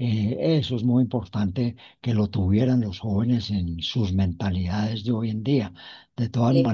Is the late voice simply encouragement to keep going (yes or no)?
yes